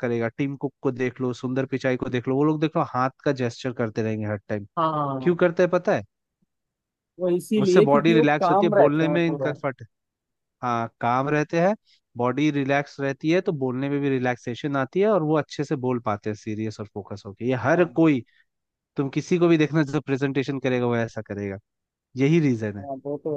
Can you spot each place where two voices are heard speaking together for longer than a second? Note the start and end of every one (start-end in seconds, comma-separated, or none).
7.6-9.5